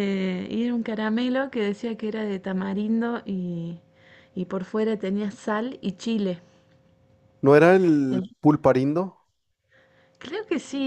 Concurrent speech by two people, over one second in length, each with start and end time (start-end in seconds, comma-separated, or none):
none